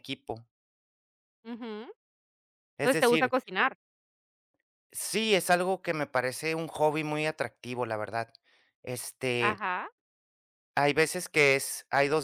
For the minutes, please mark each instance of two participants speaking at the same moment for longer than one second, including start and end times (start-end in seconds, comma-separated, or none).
none